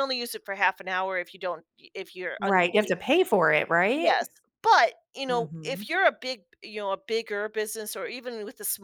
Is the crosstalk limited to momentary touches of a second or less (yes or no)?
yes